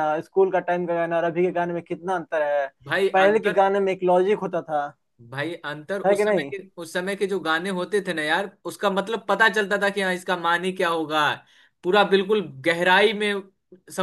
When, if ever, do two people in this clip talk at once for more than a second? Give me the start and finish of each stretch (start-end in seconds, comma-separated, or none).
none